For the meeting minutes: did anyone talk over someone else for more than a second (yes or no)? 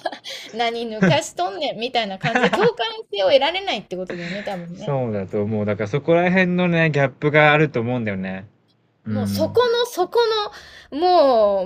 no